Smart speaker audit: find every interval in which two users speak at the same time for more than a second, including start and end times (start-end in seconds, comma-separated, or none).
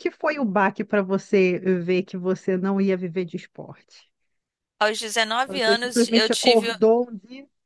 5.5-6.7